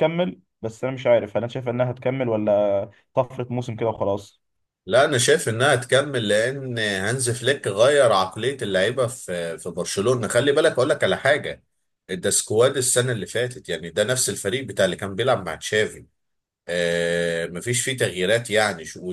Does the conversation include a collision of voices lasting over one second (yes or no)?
no